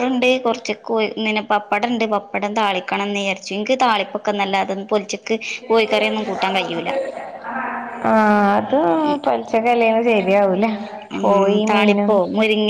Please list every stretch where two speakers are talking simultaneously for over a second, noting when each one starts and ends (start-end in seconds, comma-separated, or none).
none